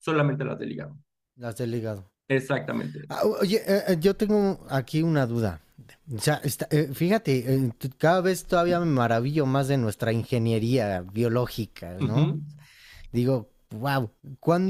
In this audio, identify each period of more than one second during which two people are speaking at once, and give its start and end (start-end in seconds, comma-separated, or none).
none